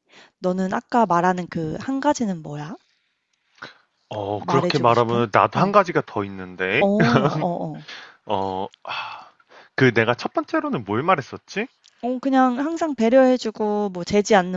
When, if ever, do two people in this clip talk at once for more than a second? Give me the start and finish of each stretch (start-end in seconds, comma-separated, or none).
4.4-5.7